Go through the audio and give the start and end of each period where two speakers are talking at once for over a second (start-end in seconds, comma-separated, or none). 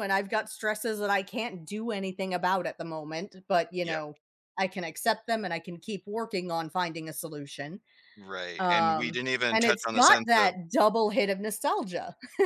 8.6-10.6